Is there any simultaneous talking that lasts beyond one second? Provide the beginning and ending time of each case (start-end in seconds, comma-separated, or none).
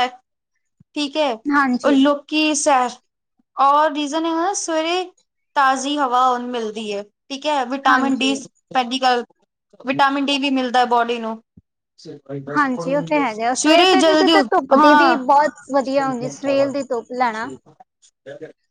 13.5-15.2